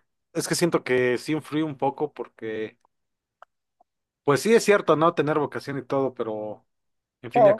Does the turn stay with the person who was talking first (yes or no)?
yes